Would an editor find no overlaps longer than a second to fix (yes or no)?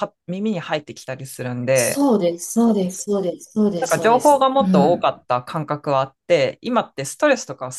no